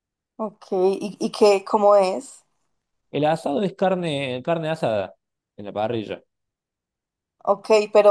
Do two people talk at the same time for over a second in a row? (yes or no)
no